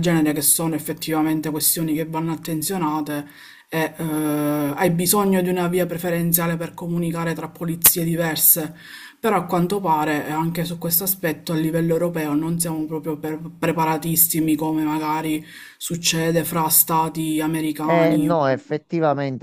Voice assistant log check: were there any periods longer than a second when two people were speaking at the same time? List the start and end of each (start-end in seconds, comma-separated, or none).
none